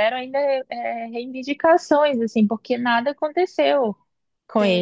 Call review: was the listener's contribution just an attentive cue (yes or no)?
no